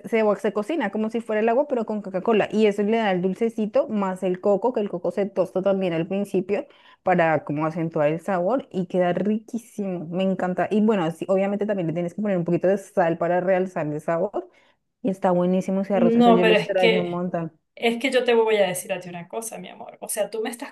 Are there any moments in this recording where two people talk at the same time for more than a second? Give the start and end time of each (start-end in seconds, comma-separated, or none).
15.9-17.2